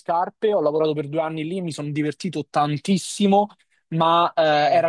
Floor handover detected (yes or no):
no